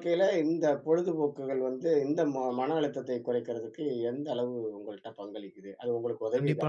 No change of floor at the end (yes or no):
no